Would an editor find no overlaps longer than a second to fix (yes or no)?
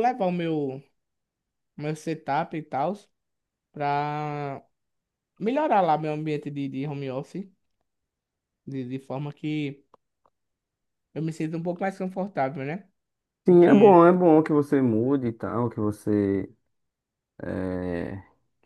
yes